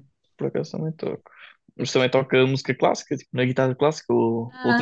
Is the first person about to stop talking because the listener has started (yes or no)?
yes